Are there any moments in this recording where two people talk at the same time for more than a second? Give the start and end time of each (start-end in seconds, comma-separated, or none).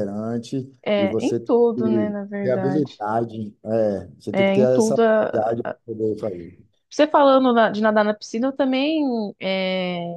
1.0-3.0, 4.3-5.5